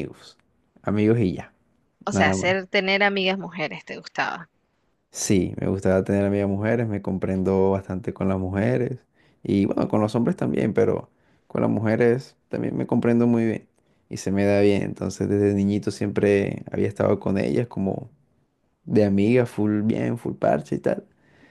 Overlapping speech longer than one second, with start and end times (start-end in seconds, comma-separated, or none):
none